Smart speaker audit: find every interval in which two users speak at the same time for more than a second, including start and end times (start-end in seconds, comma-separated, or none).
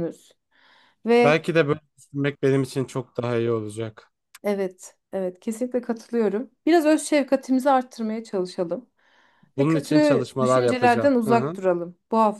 9.6-11.6